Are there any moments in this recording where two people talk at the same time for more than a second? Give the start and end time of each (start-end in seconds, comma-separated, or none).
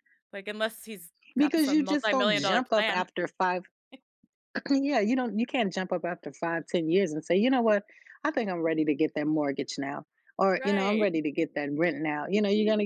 1.4-3.1